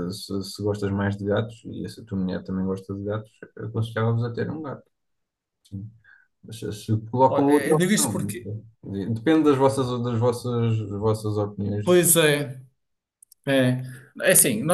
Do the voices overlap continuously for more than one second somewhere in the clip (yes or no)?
yes